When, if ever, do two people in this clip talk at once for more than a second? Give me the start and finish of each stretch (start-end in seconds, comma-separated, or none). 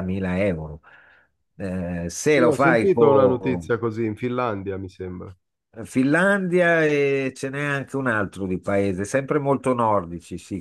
2.4-3.7